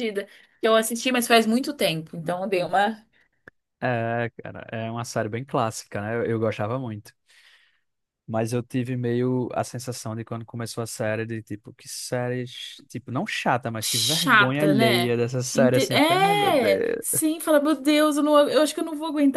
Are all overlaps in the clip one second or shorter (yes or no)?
no